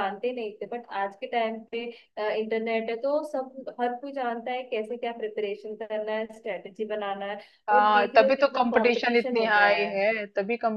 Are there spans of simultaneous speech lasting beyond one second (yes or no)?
yes